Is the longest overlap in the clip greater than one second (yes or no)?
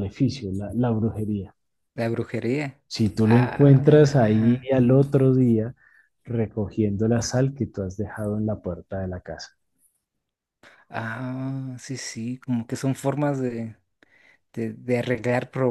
yes